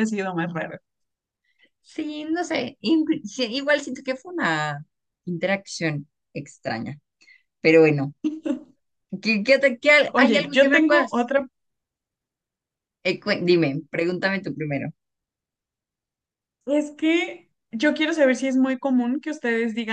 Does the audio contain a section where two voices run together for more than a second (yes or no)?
yes